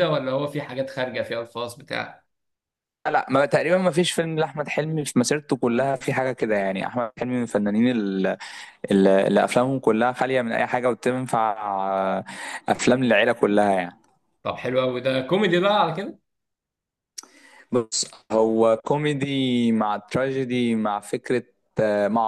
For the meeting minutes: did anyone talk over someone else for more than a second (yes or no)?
no